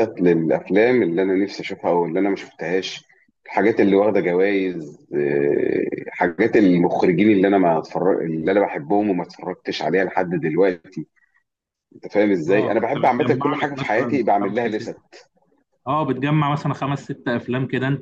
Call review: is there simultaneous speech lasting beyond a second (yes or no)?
yes